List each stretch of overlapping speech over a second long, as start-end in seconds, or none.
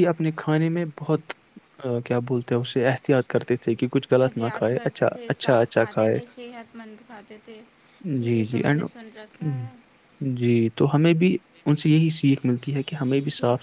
4.2-6.2